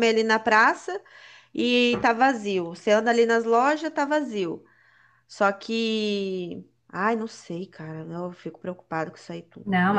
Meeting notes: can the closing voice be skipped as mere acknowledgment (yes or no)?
no